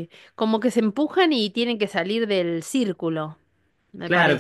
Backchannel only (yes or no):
no